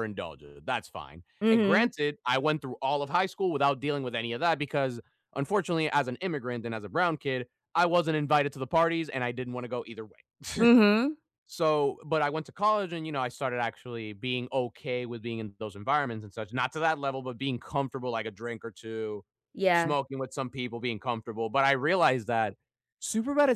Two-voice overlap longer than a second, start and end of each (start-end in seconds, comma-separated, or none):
none